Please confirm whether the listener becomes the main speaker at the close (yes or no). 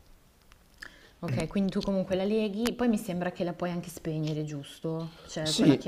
yes